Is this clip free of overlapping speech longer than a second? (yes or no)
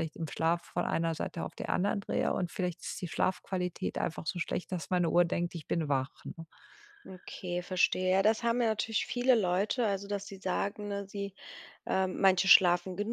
yes